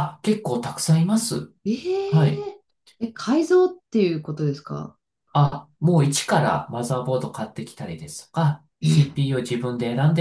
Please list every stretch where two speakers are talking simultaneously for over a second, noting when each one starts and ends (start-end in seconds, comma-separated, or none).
none